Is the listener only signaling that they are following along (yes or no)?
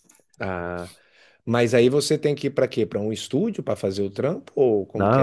no